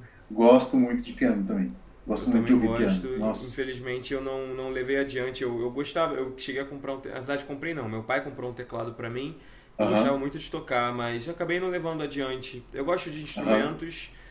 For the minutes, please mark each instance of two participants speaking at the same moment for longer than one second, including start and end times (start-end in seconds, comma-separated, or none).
2.2-3.6